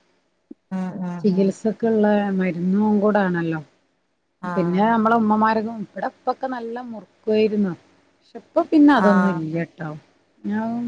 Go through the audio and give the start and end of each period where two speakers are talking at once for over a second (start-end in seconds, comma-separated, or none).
none